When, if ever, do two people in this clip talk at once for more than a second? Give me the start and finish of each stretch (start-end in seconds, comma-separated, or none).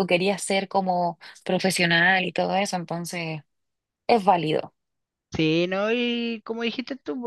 none